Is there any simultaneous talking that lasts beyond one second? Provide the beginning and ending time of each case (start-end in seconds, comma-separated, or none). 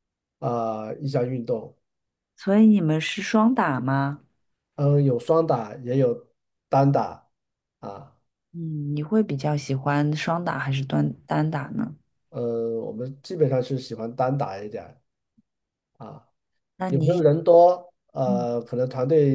none